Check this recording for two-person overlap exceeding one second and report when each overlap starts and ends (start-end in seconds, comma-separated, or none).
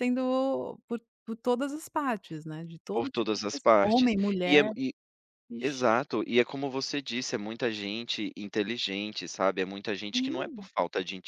2.9-4.6